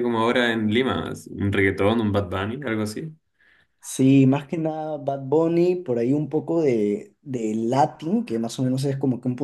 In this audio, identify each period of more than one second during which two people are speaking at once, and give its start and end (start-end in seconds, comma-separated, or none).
none